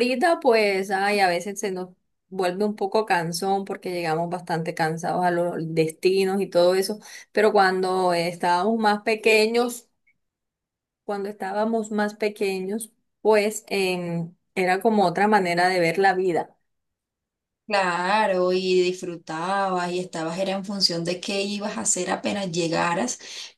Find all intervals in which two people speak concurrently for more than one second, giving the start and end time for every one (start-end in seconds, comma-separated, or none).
none